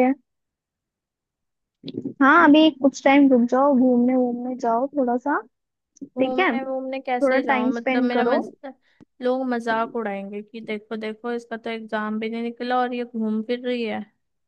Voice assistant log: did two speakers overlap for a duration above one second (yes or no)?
yes